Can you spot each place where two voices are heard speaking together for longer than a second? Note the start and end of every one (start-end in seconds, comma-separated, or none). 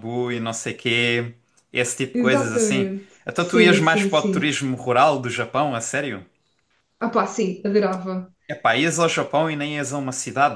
2.1-4.5